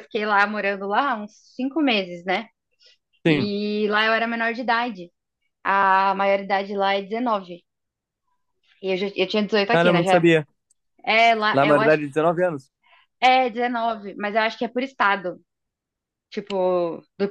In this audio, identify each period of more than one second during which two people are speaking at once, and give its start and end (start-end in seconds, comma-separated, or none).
none